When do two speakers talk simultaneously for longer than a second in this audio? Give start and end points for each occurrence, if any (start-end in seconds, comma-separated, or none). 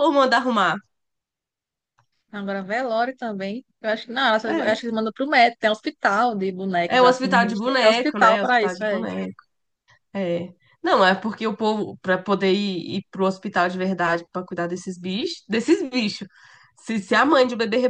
6.9-9.0